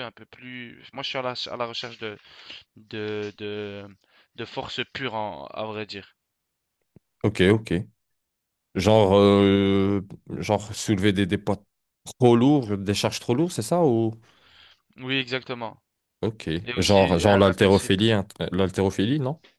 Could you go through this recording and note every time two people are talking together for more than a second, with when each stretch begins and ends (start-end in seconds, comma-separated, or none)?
16.6-17.9